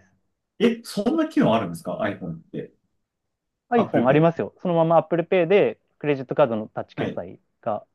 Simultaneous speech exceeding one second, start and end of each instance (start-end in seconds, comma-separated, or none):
none